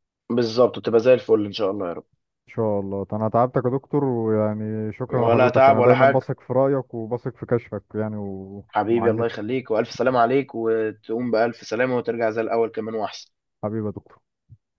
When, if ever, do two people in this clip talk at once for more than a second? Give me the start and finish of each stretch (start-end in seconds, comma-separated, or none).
5.1-6.3